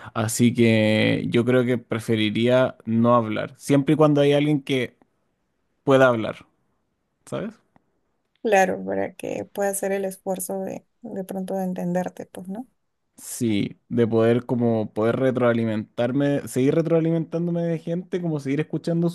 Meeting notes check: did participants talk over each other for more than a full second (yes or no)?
no